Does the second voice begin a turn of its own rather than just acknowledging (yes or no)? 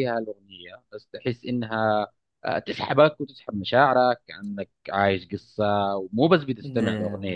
no